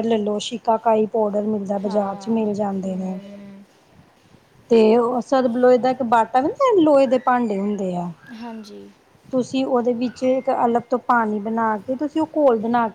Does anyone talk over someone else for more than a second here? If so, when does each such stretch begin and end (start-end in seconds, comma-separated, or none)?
1.8-3.2